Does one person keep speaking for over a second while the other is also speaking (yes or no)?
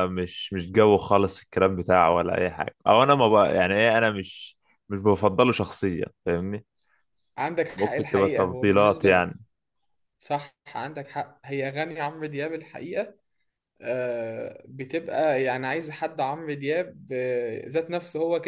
yes